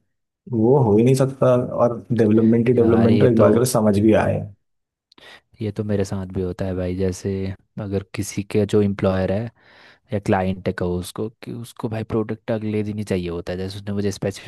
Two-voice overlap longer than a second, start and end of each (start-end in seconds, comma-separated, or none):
2.8-4.4